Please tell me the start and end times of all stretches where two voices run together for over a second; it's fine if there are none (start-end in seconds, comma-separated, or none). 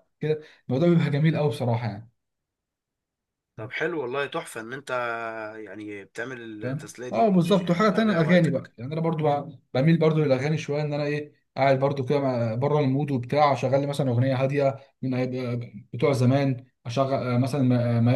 6.6-8.7